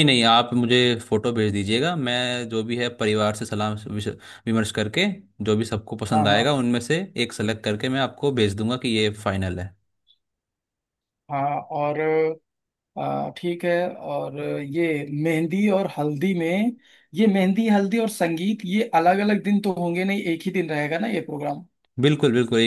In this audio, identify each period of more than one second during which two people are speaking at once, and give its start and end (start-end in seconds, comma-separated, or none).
none